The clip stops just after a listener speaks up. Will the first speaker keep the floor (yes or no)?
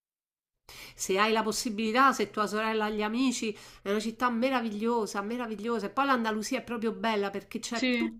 yes